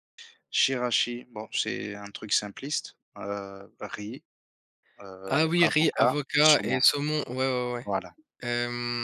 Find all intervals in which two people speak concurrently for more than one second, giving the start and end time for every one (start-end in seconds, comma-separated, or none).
5.3-6.8